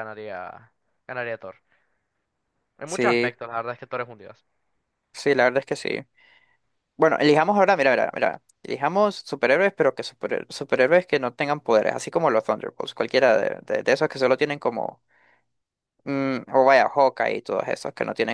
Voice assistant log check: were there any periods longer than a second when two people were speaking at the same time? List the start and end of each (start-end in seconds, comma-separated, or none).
none